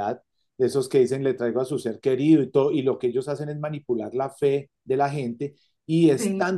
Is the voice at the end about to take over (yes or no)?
no